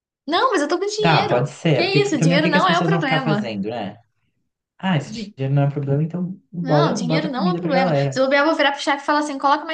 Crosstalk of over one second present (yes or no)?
yes